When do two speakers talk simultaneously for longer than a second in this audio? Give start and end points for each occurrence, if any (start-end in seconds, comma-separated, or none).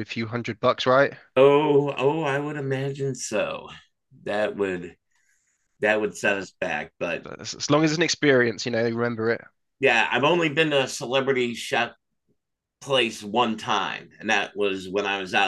none